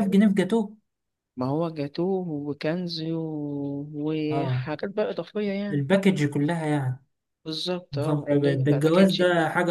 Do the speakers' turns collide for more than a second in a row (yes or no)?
yes